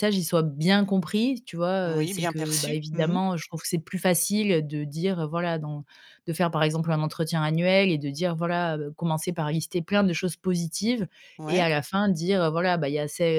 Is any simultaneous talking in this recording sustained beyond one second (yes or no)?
yes